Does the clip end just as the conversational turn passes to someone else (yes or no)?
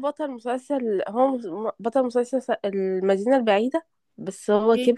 yes